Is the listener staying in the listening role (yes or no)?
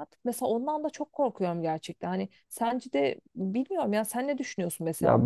no